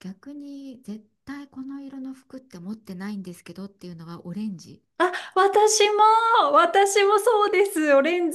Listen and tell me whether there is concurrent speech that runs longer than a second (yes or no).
no